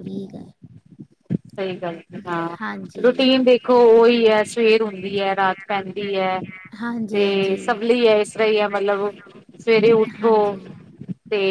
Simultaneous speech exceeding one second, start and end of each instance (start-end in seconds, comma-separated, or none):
none